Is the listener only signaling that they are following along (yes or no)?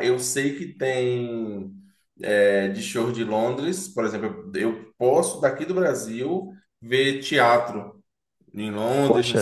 yes